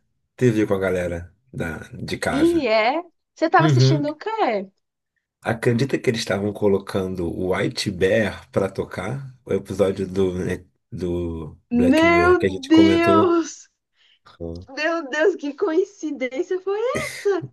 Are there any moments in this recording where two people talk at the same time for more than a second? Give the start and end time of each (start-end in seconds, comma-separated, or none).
11.9-13.3